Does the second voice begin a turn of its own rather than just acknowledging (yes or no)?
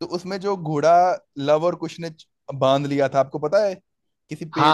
yes